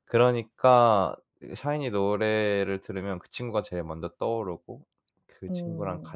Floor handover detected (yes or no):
no